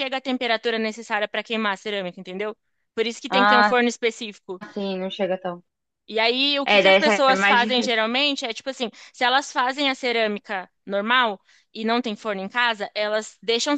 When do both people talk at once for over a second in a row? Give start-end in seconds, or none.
6.6-8.0